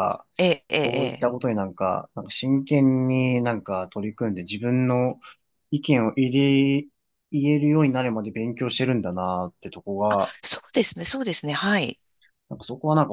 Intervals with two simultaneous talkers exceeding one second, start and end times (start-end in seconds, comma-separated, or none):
none